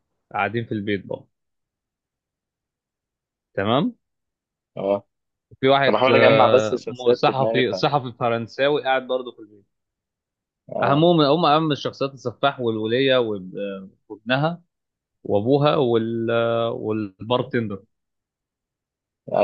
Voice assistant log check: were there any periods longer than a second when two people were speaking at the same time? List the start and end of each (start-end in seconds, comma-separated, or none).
5.9-7.7